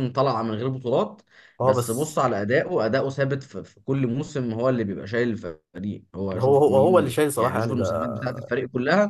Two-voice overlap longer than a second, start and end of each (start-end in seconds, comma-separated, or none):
6.3-8.5